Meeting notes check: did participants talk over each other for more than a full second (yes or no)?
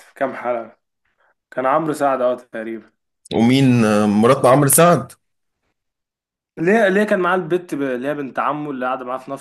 no